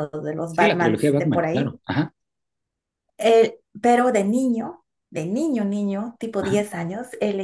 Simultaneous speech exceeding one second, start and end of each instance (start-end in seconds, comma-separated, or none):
0.5-1.7